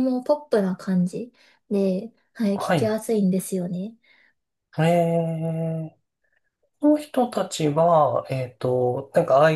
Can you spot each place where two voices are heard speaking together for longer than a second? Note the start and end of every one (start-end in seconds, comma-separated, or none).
none